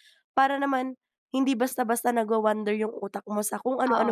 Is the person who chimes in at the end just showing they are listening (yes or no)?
no